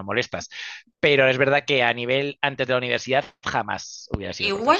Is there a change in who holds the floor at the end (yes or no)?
yes